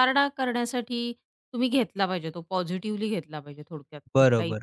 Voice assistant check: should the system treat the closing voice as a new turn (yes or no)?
yes